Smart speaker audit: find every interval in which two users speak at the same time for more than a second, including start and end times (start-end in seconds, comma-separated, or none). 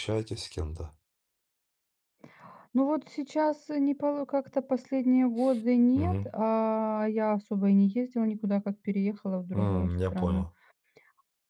none